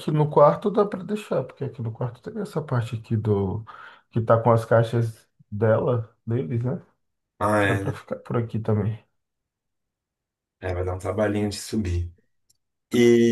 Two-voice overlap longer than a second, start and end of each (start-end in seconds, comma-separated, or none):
none